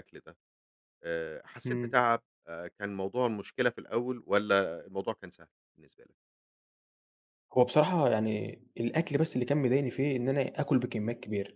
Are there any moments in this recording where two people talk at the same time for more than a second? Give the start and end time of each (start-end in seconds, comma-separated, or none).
none